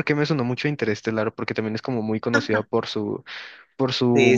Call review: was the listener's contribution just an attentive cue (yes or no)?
no